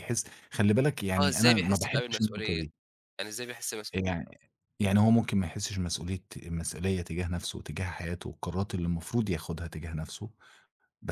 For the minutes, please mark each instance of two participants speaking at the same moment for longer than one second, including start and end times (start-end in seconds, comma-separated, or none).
1.2-2.6